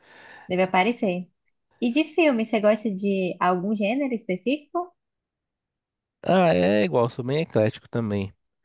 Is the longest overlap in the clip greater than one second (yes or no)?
no